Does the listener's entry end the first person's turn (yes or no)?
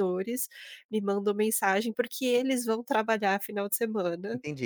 yes